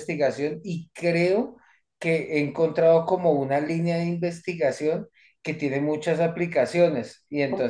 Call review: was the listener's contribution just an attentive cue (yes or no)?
yes